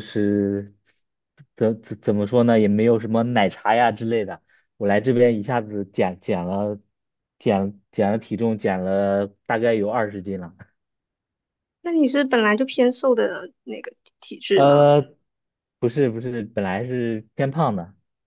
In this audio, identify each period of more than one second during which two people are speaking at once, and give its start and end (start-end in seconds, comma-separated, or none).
none